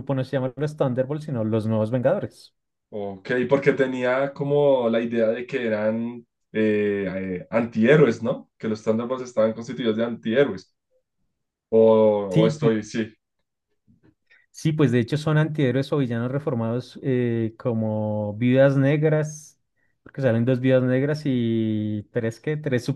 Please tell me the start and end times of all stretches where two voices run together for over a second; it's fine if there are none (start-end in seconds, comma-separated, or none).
none